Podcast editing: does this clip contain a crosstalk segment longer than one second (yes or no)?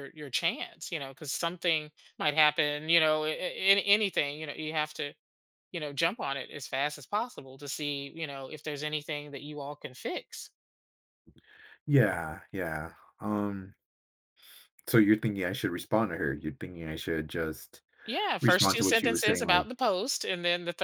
yes